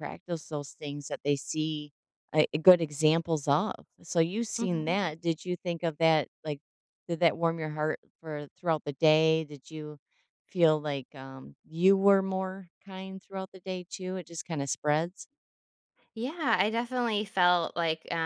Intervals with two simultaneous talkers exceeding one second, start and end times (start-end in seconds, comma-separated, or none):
none